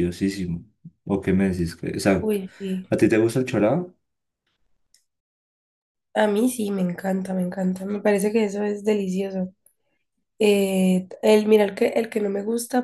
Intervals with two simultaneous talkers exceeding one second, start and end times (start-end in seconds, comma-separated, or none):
none